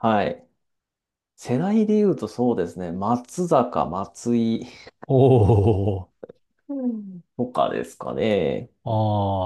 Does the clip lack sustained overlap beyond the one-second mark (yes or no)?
yes